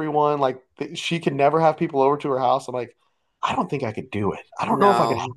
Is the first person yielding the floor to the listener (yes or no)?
no